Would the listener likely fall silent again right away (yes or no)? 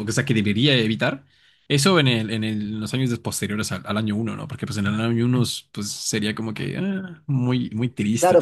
no